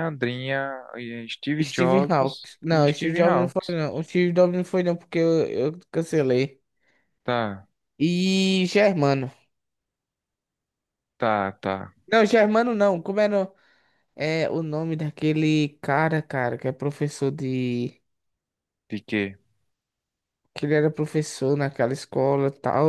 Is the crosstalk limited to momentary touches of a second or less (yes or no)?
no